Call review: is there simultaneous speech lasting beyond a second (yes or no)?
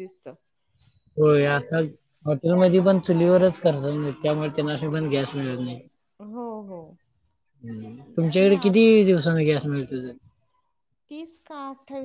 no